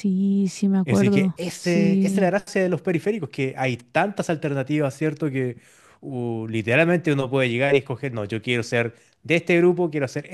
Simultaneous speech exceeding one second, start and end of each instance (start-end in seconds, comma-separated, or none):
0.8-2.3